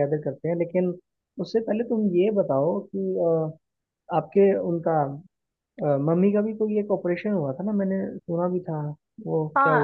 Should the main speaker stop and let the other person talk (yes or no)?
yes